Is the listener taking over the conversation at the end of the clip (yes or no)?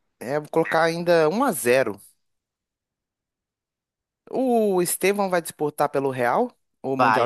yes